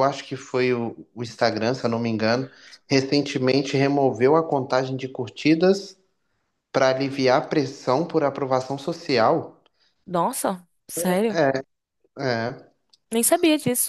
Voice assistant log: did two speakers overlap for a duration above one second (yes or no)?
no